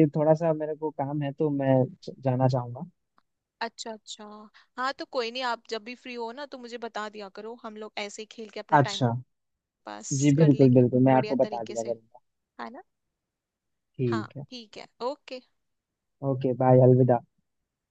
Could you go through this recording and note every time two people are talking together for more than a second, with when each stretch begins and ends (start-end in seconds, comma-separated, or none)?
10.2-11.9